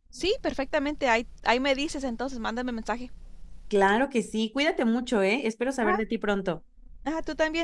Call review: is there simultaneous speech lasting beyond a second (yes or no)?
no